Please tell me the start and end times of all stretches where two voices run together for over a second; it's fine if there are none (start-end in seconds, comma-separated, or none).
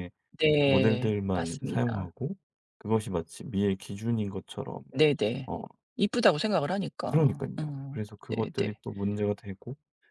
0.6-2.1, 7.1-8.7